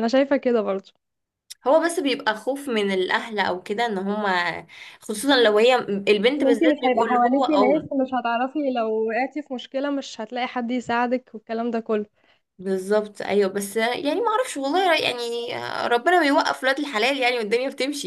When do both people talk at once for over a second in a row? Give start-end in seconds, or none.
6.4-7.9